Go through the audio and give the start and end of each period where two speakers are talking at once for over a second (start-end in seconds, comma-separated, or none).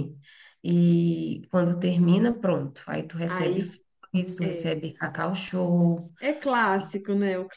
none